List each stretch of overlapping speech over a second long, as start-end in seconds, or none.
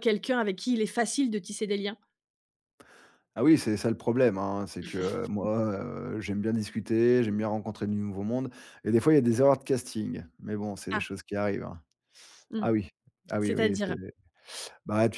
none